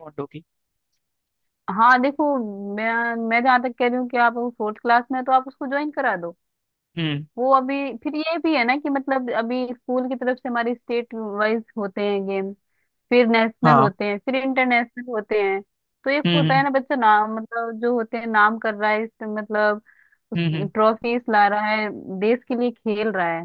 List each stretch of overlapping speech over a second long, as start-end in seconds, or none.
none